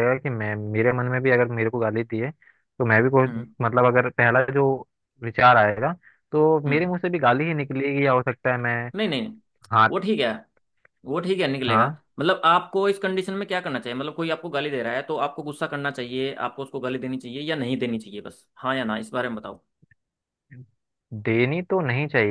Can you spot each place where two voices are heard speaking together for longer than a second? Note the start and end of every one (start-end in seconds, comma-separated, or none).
none